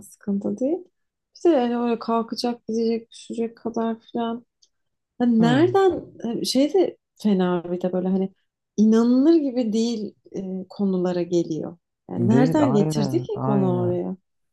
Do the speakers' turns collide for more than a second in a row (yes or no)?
yes